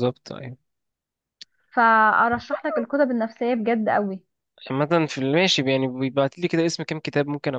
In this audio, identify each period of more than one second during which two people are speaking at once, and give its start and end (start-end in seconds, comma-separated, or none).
none